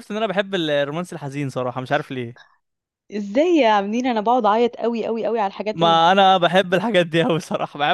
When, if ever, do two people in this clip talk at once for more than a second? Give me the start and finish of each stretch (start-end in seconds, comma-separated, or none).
none